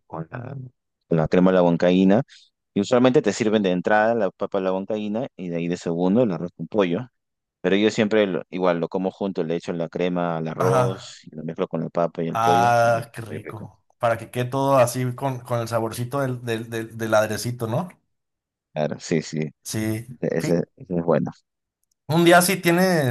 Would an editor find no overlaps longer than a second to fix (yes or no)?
no